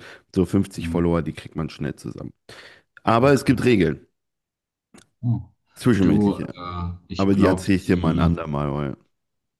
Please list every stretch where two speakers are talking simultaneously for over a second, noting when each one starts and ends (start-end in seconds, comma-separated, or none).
7.2-8.4